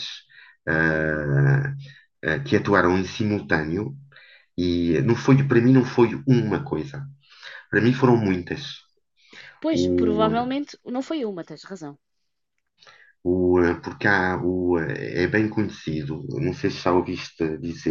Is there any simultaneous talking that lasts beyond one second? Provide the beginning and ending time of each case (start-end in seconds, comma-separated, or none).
none